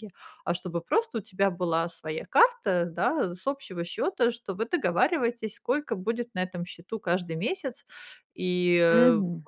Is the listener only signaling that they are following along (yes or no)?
yes